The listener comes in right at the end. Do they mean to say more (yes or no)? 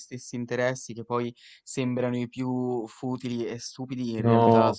no